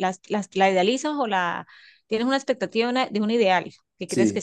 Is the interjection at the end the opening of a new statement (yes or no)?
no